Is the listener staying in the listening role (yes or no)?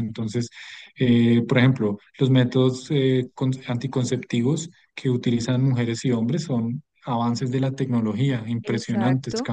yes